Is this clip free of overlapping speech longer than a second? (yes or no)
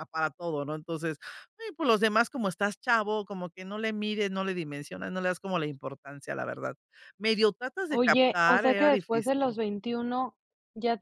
no